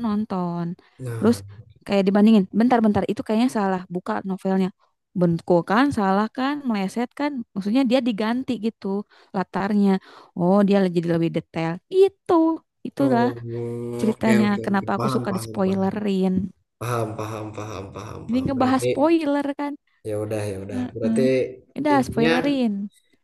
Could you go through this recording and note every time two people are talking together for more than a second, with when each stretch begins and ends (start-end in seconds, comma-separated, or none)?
14.0-15.9